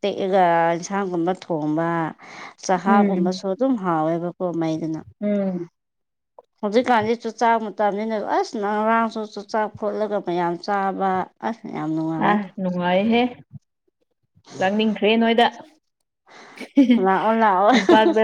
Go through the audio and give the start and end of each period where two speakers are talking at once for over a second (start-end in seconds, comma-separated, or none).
none